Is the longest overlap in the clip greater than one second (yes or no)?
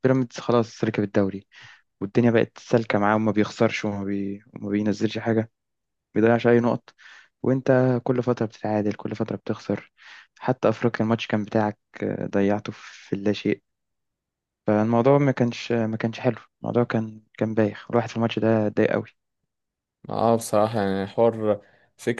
no